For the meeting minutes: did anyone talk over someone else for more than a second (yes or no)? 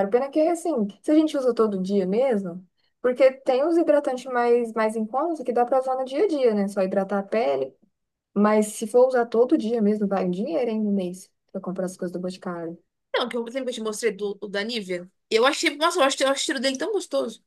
no